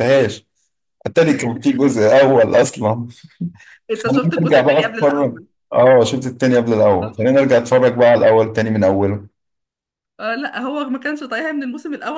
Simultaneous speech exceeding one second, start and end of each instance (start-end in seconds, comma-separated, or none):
3.9-5.5